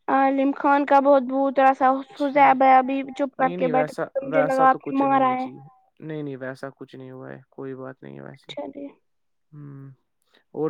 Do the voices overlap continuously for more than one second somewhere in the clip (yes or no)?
yes